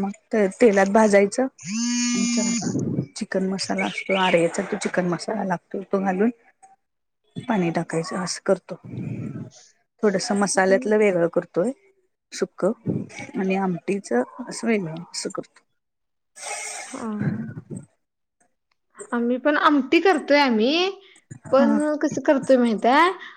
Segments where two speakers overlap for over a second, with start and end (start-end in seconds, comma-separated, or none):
none